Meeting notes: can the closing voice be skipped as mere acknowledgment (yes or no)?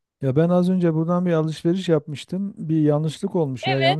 yes